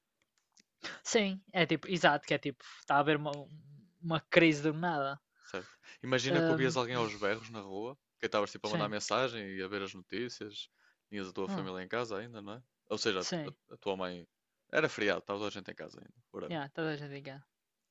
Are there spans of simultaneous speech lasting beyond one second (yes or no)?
no